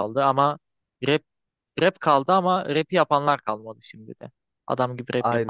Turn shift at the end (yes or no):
yes